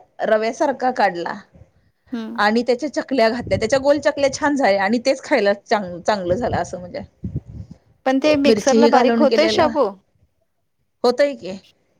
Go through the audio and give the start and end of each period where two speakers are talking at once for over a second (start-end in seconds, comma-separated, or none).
8.5-9.7